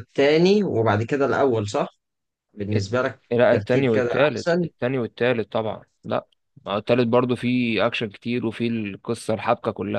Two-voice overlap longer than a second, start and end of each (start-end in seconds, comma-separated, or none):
2.8-4.7